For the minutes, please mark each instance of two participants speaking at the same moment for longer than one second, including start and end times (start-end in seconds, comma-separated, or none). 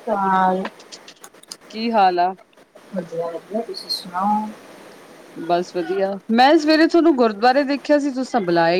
none